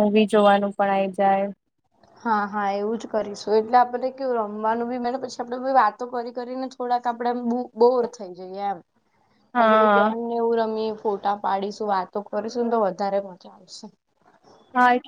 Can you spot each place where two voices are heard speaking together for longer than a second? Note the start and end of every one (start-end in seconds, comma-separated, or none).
none